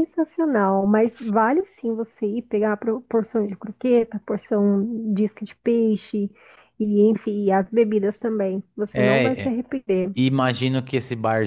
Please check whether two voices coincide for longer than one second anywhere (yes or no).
no